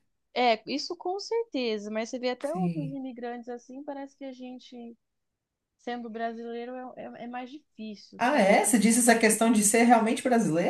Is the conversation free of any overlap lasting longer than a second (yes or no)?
no